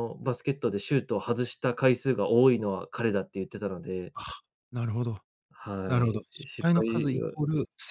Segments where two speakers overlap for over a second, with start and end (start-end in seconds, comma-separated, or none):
5.9-7.3